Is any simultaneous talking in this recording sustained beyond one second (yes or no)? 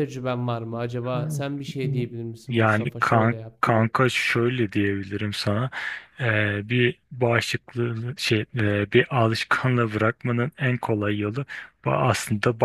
yes